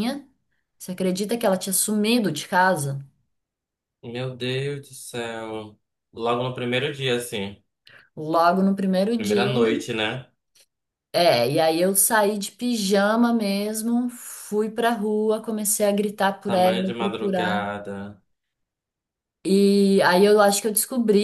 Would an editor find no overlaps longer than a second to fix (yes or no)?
no